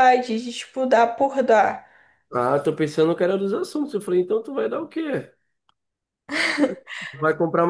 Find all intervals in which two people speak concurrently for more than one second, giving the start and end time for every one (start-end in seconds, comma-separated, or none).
none